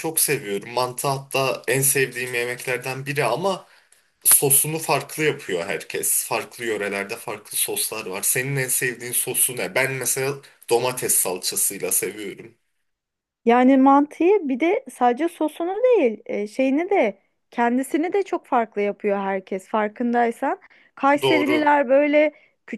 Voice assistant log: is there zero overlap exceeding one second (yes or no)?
yes